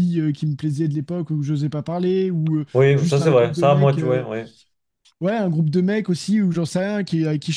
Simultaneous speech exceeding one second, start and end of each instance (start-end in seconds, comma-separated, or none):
2.7-4.3